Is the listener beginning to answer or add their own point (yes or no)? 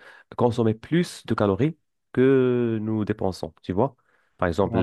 no